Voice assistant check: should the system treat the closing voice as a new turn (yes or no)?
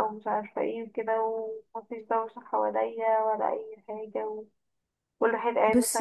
no